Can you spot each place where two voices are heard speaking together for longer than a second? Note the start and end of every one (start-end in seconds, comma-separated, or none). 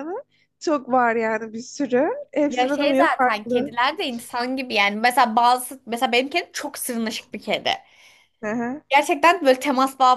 2.5-3.8